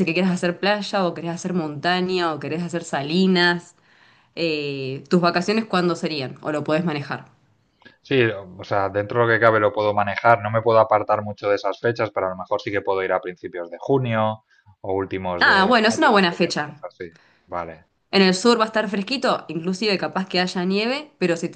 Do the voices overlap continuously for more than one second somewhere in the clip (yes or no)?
yes